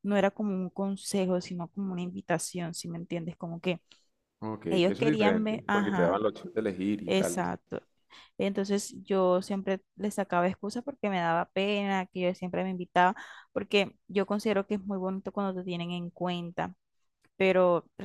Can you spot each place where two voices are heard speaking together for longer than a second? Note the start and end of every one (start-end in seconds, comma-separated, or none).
4.7-6.2